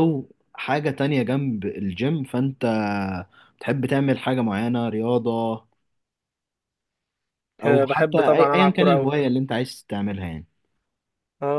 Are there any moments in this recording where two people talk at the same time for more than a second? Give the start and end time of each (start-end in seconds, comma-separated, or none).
7.7-9.1